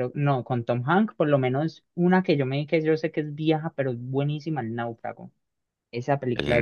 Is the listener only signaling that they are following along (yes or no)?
yes